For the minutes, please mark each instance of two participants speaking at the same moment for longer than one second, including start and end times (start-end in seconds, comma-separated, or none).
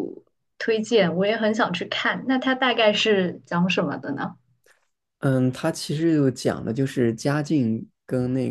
none